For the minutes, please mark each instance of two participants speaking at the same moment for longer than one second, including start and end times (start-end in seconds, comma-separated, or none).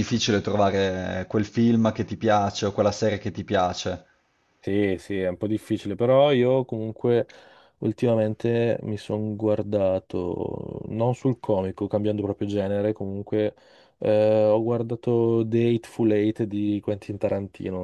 none